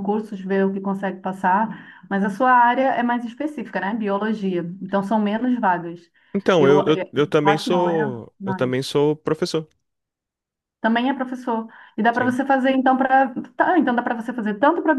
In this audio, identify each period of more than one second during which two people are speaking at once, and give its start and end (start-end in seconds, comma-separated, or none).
6.6-8.8